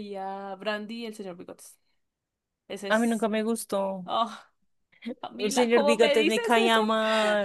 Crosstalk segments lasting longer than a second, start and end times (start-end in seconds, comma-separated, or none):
5.4-6.8